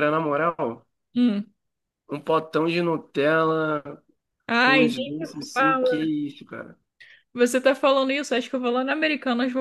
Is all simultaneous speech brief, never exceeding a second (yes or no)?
no